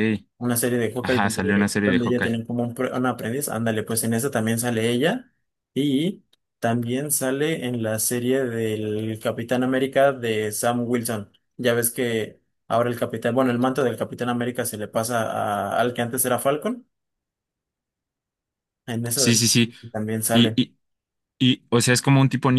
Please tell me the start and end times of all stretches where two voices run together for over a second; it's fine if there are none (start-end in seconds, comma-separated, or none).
1.0-2.4